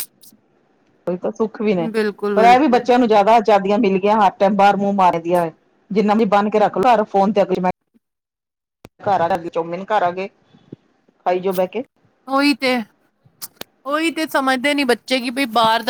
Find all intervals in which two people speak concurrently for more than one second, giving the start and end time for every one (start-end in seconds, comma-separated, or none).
none